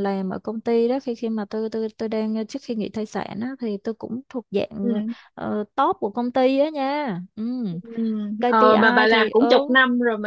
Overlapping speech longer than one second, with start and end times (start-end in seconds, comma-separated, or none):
8.5-9.7